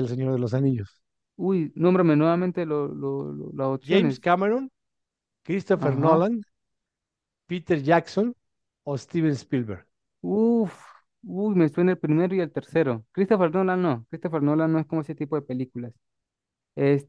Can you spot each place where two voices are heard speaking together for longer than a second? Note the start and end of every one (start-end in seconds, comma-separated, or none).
none